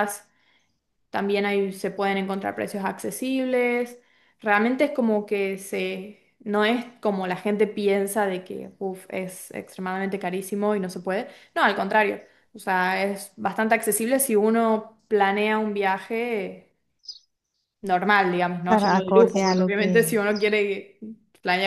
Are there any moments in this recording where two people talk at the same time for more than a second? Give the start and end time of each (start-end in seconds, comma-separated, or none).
18.6-20.1